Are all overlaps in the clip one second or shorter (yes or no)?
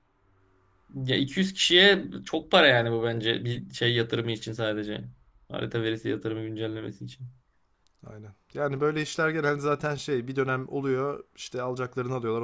yes